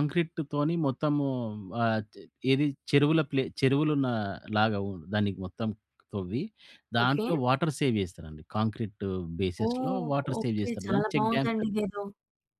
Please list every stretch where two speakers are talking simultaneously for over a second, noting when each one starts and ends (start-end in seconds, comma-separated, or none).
9.7-11.7